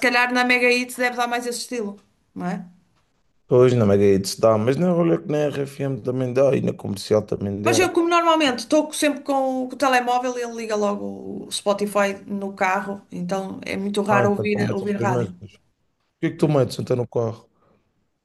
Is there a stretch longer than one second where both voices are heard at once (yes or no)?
yes